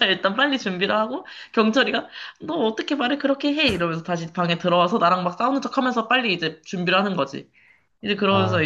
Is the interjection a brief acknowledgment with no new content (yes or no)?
yes